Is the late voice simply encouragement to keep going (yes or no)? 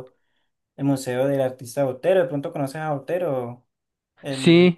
no